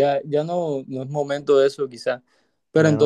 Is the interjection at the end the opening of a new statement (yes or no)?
no